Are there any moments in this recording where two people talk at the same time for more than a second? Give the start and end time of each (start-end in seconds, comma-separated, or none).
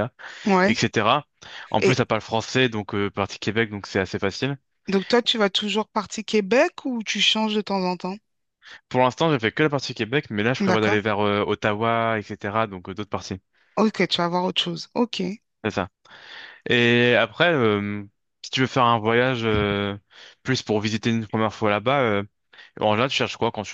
none